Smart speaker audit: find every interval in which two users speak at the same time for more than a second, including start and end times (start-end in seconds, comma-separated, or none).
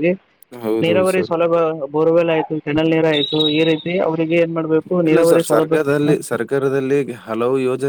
none